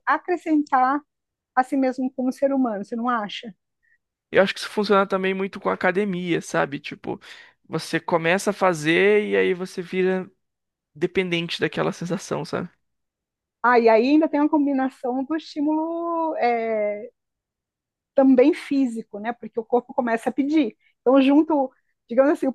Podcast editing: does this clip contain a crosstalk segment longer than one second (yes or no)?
no